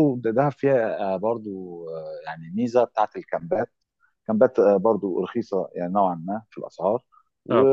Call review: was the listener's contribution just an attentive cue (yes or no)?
yes